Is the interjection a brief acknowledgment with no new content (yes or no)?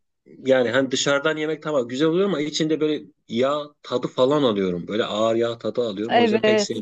no